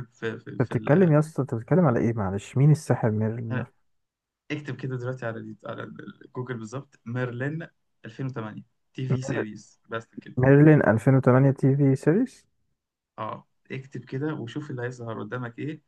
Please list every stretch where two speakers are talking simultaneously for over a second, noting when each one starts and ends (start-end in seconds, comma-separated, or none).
none